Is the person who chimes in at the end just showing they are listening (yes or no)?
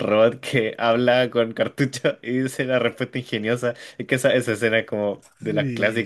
no